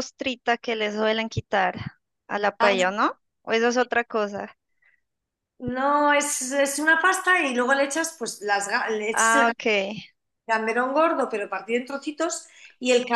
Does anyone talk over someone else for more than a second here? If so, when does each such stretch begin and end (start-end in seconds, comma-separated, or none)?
none